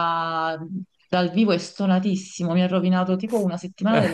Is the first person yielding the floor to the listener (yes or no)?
no